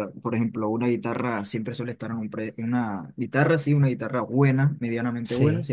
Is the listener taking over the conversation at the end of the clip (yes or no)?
no